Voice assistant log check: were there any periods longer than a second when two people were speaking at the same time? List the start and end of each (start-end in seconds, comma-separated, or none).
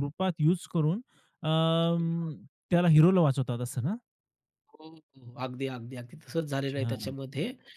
none